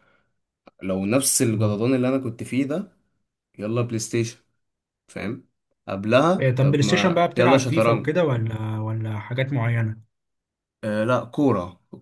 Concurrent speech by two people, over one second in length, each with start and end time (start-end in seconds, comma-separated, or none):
6.4-8.1